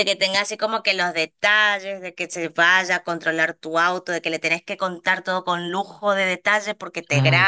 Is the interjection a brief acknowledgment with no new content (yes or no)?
yes